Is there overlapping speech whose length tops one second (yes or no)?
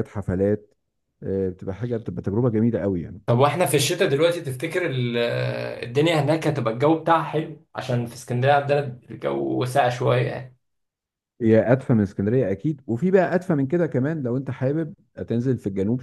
no